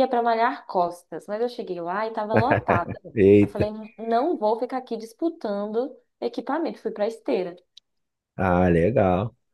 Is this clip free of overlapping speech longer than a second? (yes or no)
yes